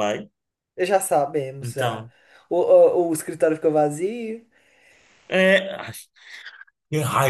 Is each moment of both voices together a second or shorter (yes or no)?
yes